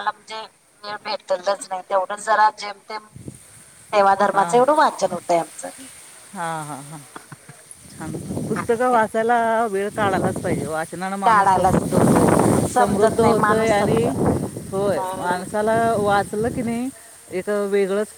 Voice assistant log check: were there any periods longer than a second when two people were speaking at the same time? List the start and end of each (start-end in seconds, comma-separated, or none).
12.7-14.0